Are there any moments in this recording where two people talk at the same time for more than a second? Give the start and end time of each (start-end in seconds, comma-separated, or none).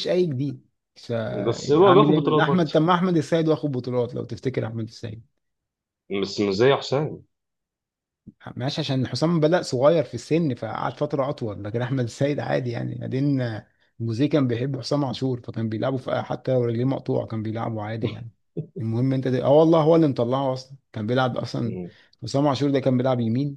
1.5-2.7